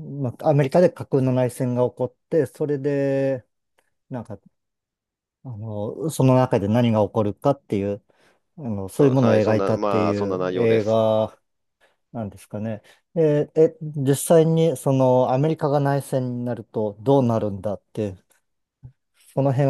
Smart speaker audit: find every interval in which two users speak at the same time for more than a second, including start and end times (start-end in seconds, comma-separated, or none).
8.9-11.0